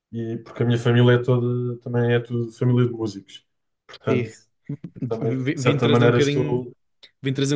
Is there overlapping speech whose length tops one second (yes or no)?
yes